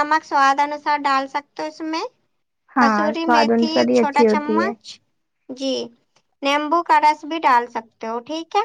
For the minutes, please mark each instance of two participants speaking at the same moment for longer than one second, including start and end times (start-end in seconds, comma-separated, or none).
2.8-4.7